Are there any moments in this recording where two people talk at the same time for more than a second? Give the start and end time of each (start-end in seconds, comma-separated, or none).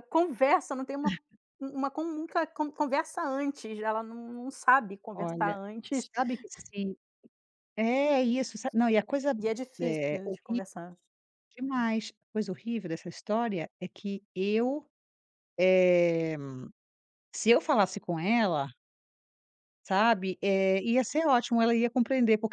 none